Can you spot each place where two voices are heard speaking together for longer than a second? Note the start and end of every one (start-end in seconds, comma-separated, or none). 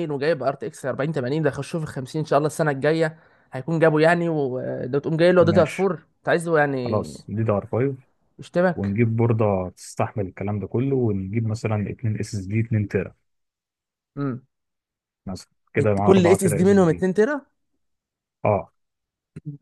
15.8-17.1